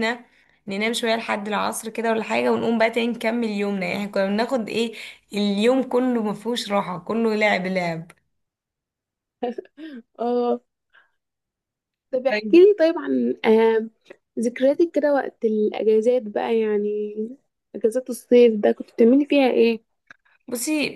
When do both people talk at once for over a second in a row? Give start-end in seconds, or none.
none